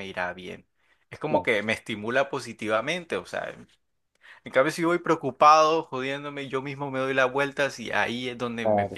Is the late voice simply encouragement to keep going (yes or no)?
yes